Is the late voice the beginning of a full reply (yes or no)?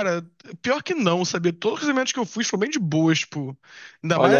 no